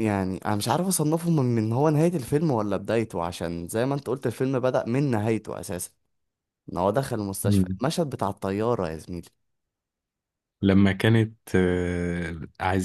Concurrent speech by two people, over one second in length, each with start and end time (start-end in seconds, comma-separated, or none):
none